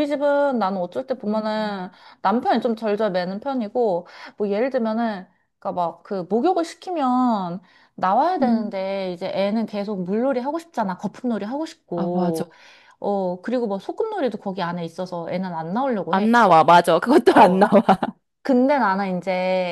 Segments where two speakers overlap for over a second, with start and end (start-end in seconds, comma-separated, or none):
none